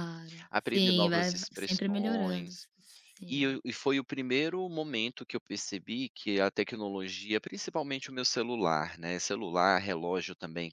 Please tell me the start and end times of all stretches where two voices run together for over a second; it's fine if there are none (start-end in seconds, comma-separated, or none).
0.5-2.5